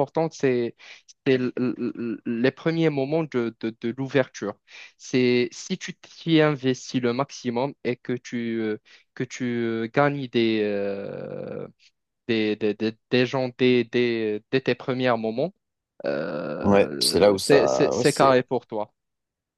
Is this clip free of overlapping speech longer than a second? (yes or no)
no